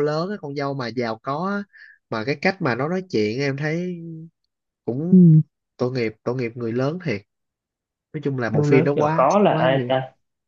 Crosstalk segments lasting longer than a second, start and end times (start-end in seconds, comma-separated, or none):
8.5-9.9